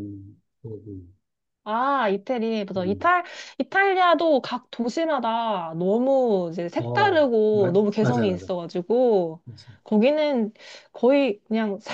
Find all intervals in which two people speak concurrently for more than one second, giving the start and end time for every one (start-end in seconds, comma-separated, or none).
6.8-8.5